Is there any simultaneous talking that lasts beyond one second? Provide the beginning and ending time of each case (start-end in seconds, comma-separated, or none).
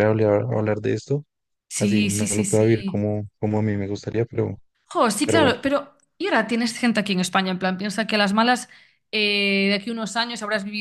1.8-3.1